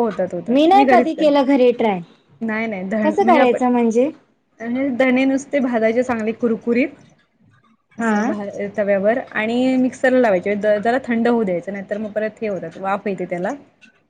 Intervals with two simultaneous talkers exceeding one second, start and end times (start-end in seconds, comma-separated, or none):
none